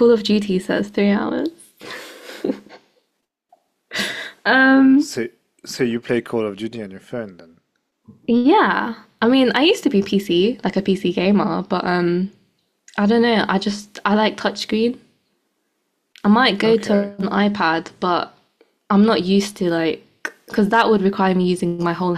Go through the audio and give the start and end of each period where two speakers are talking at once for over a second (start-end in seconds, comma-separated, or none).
none